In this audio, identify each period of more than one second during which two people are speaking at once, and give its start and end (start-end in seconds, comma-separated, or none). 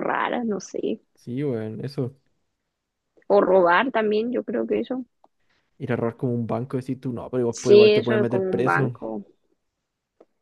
7.5-8.9